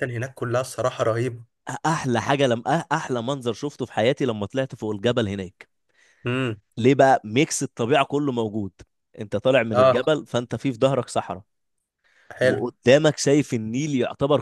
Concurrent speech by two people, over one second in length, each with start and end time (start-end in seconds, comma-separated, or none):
none